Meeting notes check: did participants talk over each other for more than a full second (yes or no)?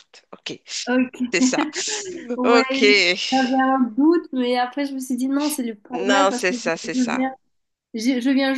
yes